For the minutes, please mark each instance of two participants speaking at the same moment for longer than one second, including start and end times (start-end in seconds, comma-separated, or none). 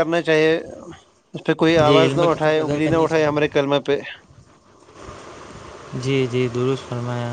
1.9-3.5